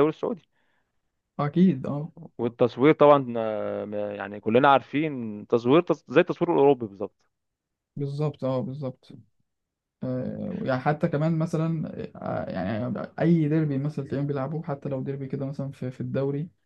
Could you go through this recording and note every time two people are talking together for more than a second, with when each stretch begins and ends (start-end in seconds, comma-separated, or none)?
none